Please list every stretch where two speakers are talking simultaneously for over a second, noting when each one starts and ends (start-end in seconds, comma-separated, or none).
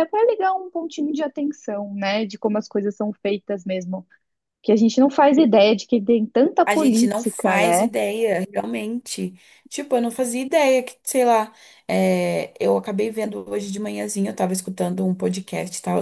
6.7-7.9